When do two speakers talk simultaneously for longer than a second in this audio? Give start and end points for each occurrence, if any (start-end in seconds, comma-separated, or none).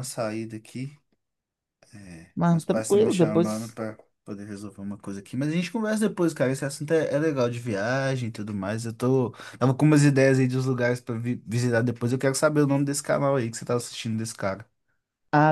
2.5-3.8